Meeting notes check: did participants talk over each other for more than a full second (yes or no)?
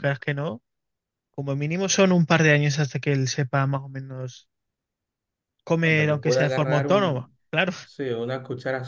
yes